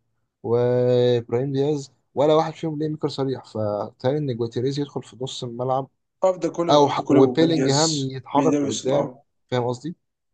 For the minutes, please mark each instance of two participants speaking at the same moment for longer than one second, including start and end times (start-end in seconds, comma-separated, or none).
6.7-9.1